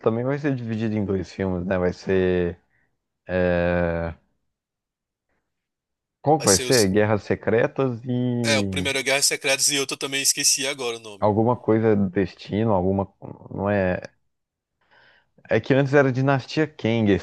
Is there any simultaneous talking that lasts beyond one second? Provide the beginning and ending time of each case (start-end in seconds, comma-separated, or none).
none